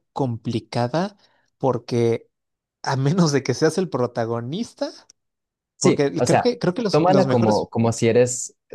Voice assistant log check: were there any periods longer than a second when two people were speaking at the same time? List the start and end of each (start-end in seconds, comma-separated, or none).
5.8-7.7